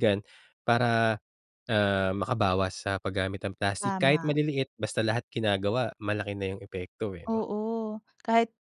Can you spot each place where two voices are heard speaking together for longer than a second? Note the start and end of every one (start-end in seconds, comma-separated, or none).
none